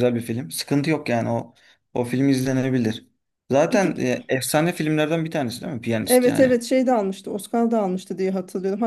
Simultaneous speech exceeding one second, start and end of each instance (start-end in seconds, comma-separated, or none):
none